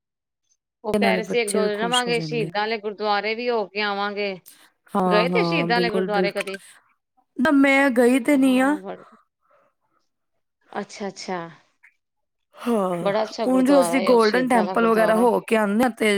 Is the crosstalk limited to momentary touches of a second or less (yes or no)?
no